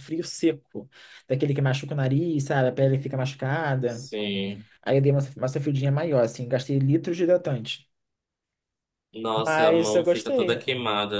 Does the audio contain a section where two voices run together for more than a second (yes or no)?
yes